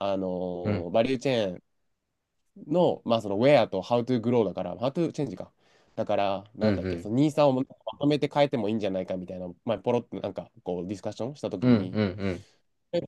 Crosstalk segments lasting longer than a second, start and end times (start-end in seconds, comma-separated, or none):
none